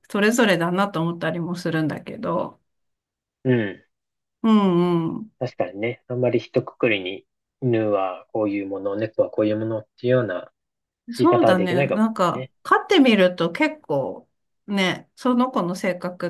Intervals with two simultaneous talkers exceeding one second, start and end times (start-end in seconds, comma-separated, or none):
11.2-12.5